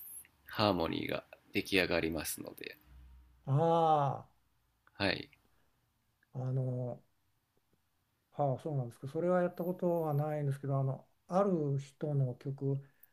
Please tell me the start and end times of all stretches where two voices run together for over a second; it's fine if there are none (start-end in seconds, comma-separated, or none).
none